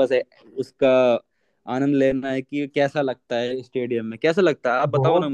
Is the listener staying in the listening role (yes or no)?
no